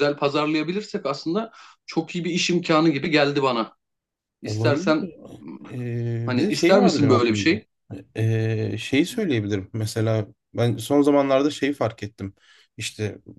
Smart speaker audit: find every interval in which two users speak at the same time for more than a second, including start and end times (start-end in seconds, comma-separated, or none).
6.2-7.5